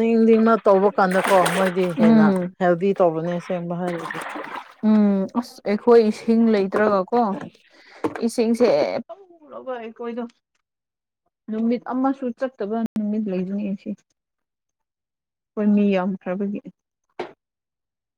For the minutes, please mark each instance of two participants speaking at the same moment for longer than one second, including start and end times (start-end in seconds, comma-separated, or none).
none